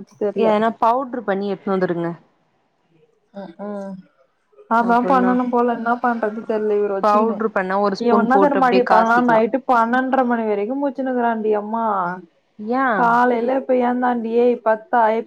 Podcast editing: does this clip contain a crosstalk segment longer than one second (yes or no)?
yes